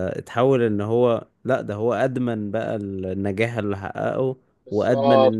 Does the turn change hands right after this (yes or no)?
no